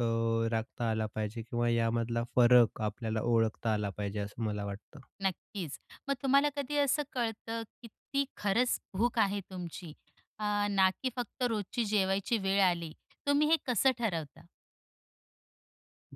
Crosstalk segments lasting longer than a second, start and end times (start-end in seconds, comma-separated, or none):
none